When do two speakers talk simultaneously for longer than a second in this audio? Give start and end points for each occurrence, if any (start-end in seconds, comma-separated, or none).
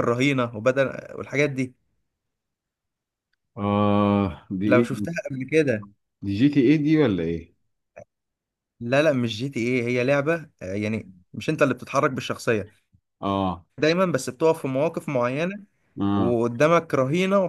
none